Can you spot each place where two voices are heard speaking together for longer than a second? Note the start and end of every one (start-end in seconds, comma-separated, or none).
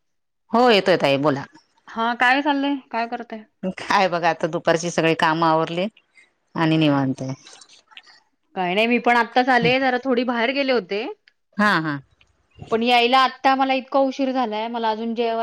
none